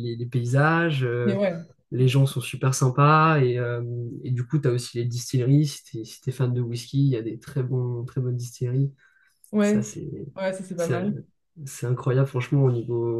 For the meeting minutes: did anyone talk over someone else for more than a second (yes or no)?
no